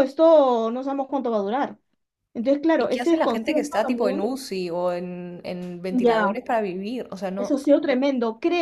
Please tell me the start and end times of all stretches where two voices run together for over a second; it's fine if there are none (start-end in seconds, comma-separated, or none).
2.8-4.3